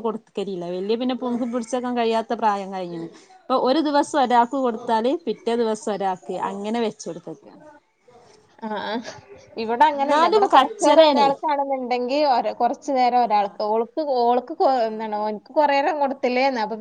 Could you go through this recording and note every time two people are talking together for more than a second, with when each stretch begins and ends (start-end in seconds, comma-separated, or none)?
10.0-11.3